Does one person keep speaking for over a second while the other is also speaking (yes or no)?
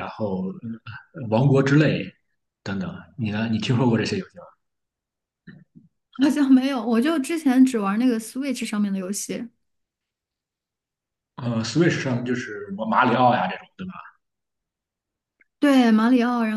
no